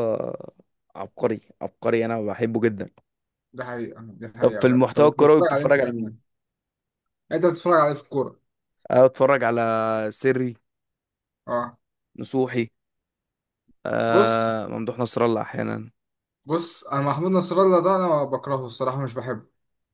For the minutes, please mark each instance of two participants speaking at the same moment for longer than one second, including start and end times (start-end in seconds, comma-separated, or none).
4.4-6.2